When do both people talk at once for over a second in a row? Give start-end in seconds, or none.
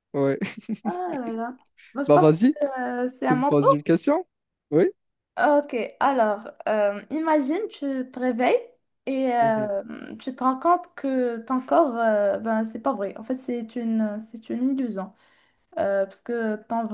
none